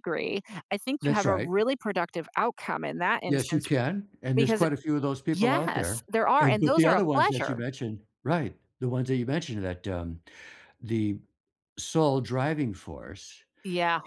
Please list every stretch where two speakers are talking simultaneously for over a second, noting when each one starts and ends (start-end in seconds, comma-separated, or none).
5.3-7.6